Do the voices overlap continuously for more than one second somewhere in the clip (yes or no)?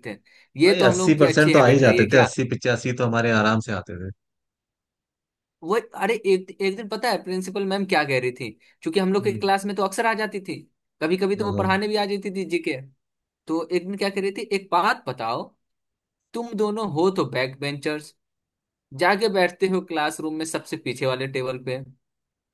yes